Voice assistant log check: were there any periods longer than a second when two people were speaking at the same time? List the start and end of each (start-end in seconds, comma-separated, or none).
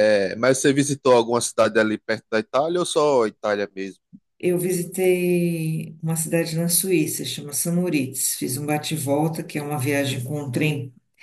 none